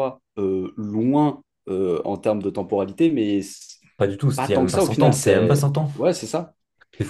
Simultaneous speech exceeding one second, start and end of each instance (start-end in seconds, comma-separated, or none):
4.3-5.9